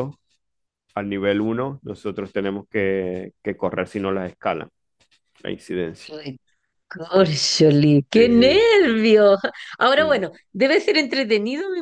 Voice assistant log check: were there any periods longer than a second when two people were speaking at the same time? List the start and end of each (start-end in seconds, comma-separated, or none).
none